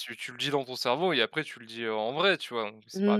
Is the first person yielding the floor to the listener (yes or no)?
yes